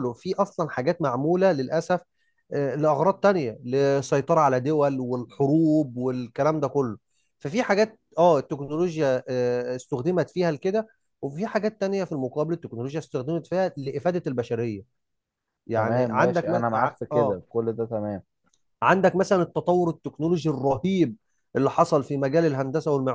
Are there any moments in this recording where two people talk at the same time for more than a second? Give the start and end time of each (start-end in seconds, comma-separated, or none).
15.8-17.4